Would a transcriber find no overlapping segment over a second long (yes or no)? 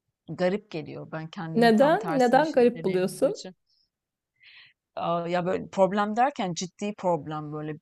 no